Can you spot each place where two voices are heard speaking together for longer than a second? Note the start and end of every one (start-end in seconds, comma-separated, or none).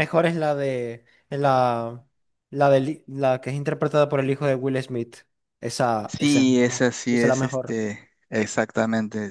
6.1-7.8